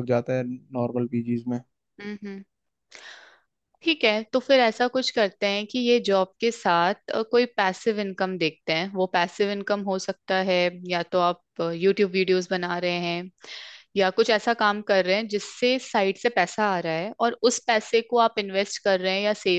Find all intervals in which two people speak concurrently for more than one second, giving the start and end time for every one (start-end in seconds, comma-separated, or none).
none